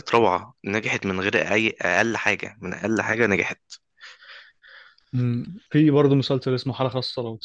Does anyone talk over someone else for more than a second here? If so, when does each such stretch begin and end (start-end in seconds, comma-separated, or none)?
none